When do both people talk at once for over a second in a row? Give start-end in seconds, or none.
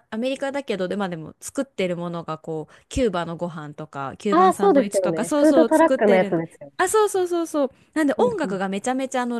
4.3-6.7